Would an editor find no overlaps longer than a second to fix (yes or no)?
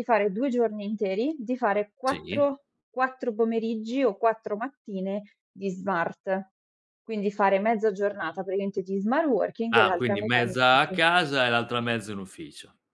no